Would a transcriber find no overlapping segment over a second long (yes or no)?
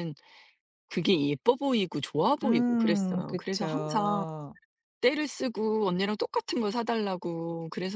no